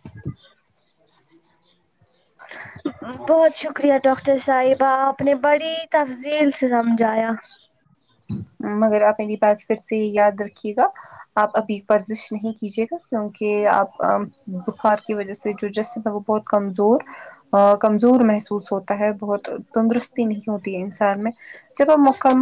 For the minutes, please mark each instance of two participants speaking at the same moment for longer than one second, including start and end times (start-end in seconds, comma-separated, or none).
none